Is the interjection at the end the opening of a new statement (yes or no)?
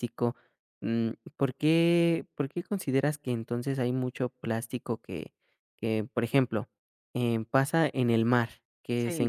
no